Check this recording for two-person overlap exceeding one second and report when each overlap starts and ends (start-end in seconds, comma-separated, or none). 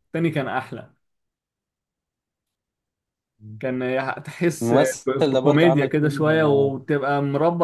4.6-6.7